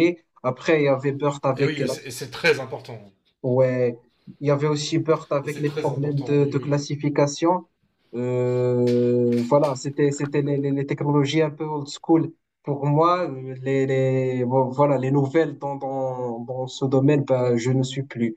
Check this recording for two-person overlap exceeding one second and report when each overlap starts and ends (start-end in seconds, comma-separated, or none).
5.4-6.7